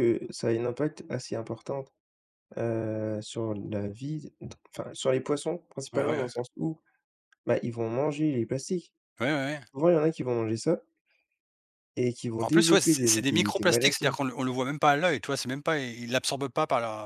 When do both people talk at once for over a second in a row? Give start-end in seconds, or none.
12.4-14.2